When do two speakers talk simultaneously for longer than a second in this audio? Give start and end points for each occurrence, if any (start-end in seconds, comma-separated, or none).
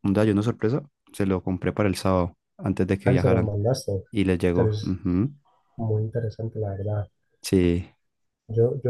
none